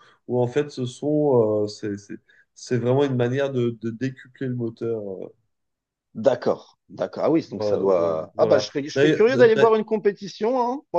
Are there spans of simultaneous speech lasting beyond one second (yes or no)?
yes